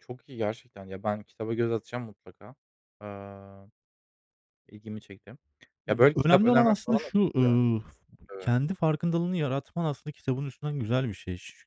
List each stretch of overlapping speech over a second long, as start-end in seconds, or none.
5.9-7.6